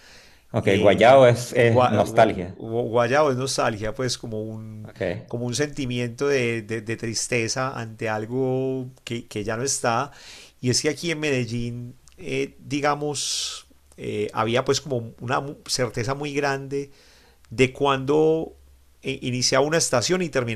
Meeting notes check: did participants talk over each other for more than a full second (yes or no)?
yes